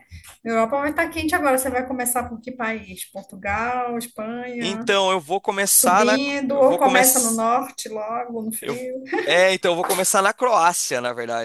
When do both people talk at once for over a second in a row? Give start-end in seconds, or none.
5.7-7.5